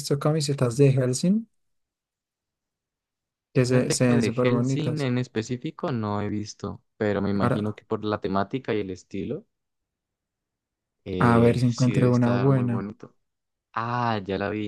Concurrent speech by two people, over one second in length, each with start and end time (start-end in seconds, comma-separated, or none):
3.6-5.1, 11.2-12.8